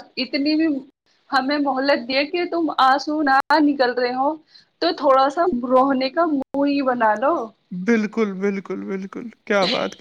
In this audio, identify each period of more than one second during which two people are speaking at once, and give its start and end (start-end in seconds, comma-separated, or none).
none